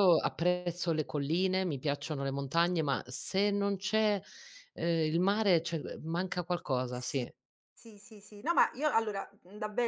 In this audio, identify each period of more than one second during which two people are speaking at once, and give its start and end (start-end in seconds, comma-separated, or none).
none